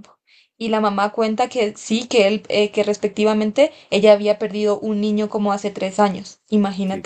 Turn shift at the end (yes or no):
yes